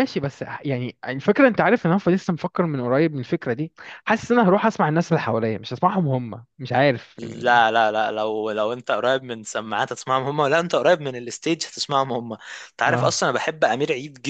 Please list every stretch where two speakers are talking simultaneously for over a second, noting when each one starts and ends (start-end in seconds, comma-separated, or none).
none